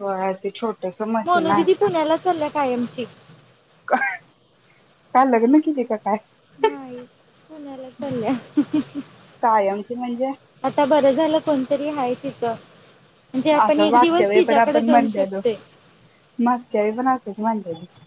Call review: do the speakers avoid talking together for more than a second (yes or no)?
no